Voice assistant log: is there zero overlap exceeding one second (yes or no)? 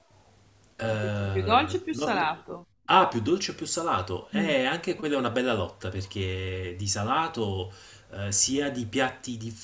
yes